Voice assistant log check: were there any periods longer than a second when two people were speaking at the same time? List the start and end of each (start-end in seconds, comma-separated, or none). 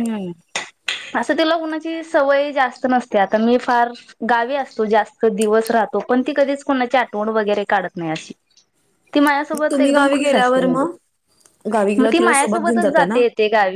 9.5-10.8